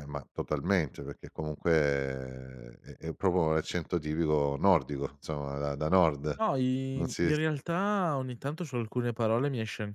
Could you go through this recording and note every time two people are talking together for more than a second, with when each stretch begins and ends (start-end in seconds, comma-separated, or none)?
none